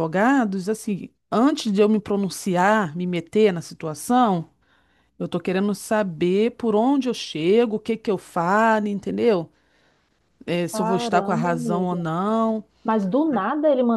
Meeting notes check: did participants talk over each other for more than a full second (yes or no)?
yes